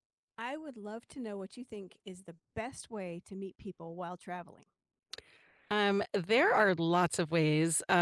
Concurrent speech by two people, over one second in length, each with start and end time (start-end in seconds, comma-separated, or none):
none